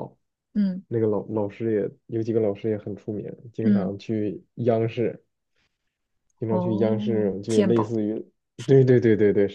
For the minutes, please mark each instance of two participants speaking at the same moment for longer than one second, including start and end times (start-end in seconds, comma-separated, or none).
6.5-7.9